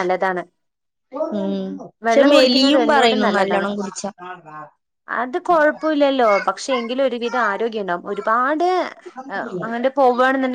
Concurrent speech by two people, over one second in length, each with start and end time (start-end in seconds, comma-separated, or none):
2.1-3.7